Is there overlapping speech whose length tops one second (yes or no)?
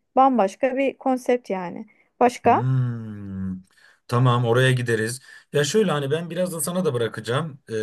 no